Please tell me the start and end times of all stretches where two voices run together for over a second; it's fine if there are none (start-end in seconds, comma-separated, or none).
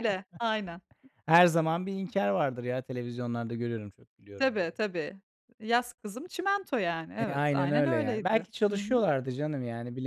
7.2-9.1